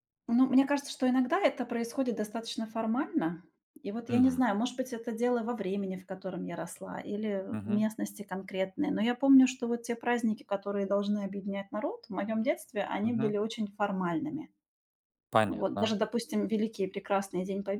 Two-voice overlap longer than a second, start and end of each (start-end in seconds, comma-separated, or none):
none